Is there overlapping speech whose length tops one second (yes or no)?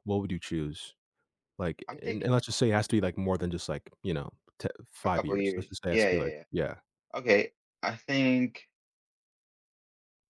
yes